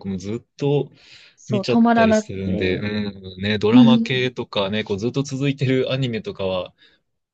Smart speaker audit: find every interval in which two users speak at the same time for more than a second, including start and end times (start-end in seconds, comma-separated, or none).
1.5-2.8